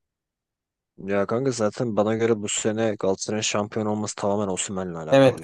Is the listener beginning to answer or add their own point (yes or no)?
yes